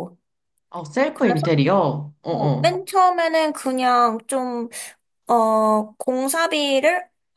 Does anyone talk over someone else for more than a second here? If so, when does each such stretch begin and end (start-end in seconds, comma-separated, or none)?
none